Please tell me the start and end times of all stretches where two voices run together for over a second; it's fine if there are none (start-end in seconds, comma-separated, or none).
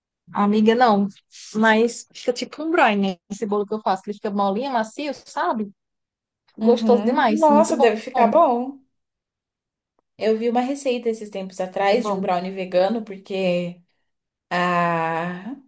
6.6-7.9